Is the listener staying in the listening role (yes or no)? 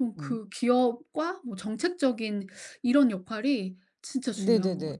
no